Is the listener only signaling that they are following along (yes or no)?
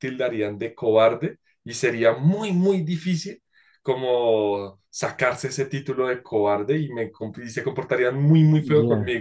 yes